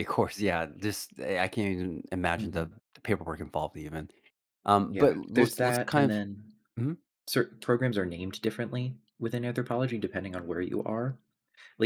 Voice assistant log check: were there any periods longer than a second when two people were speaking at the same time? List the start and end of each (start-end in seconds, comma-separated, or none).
4.9-6.2